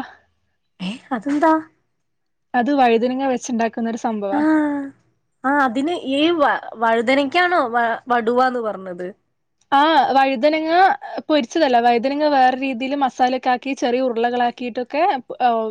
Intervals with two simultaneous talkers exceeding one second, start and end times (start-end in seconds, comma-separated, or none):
none